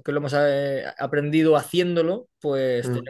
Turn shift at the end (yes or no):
no